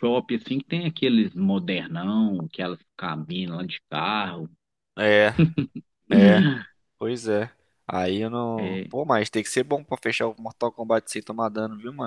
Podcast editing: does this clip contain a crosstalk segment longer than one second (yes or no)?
no